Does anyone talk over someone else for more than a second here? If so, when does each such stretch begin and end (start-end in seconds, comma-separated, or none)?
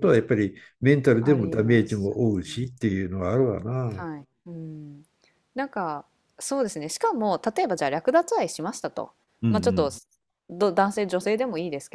1.2-2.4